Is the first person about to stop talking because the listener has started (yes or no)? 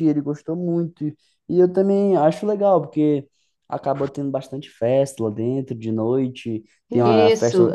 no